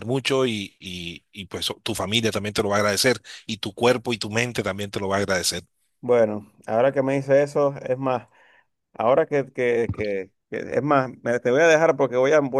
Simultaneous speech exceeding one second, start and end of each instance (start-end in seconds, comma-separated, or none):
none